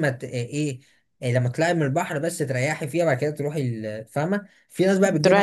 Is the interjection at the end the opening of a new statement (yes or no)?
no